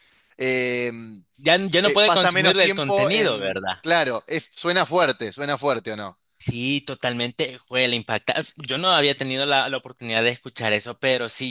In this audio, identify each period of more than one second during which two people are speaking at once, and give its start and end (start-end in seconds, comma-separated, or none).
1.8-3.8